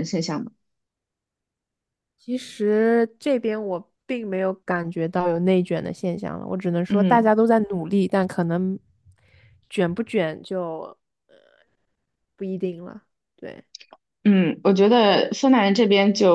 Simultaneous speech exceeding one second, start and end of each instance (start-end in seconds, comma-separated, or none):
none